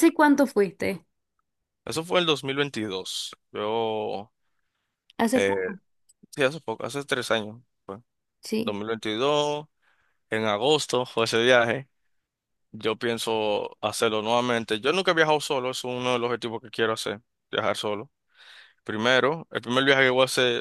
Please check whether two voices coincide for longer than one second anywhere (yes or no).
no